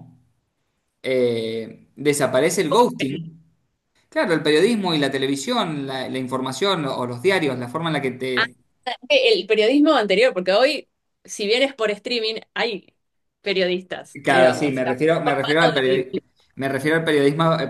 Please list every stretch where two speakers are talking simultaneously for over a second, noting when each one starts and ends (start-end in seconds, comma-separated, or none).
14.2-16.1